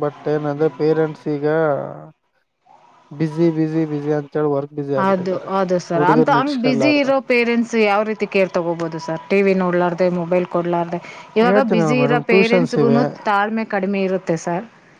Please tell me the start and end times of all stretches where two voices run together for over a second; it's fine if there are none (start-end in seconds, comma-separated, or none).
11.5-13.0